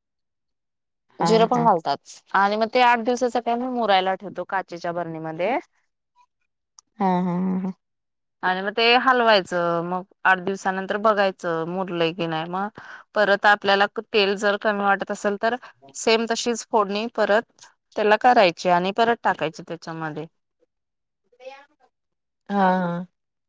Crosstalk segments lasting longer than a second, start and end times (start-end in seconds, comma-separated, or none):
none